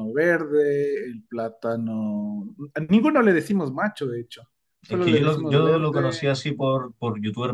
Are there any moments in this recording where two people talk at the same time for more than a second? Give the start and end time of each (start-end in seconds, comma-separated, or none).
4.9-6.4